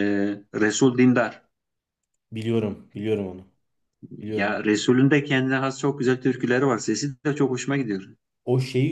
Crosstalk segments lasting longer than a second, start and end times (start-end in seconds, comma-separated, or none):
none